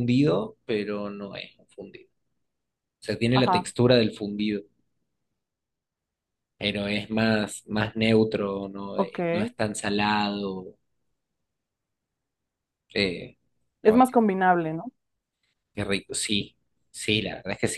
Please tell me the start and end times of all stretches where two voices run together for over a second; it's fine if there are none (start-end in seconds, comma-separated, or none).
none